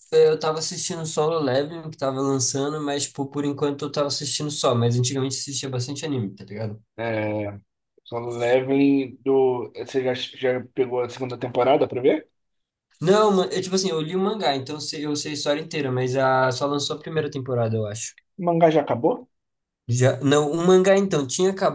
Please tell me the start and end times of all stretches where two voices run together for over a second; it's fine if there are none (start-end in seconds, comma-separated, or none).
none